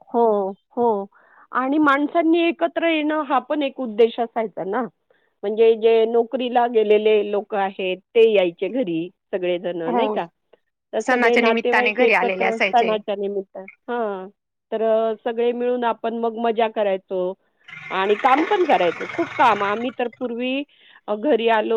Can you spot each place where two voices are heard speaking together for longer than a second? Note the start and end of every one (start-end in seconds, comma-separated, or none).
11.0-12.9